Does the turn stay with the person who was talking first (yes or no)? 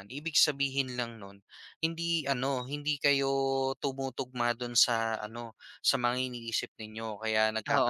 no